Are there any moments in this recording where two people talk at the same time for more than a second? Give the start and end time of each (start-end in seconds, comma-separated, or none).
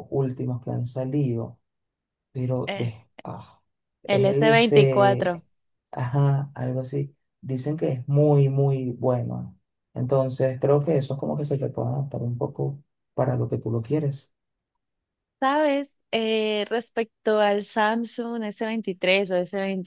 4.1-5.4